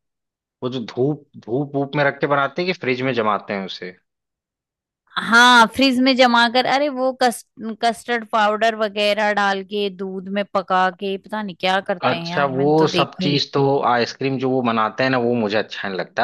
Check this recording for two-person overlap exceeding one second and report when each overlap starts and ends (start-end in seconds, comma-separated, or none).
12.0-13.4